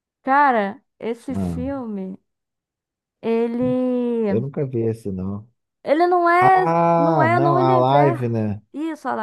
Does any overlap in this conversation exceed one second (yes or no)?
yes